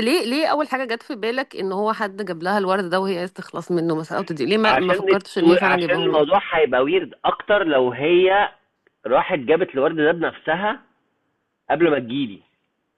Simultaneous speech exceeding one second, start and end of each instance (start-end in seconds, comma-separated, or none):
4.6-6.4